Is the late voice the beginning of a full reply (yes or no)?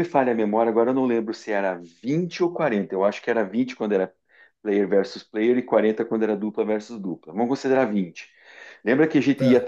no